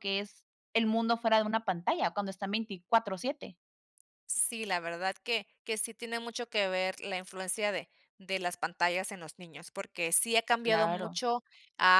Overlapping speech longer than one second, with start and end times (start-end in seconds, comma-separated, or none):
none